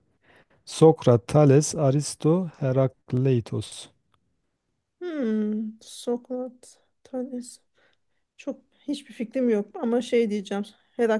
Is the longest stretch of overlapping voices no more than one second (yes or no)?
yes